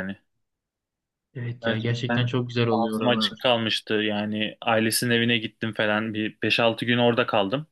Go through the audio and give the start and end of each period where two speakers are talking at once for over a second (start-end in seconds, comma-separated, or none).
1.6-3.5